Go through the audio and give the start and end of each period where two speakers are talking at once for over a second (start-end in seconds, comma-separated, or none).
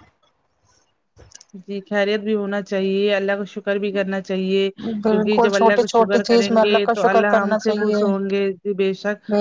5.1-8.0